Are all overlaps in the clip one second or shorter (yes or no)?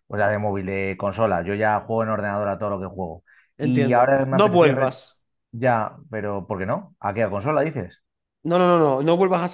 no